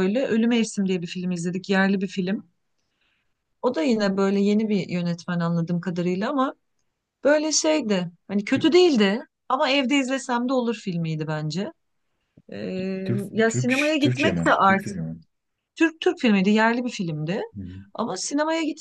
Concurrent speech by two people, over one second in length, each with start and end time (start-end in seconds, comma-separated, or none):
13.3-15.0